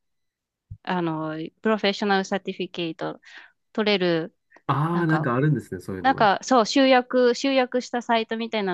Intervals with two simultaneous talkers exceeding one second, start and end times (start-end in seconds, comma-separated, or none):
none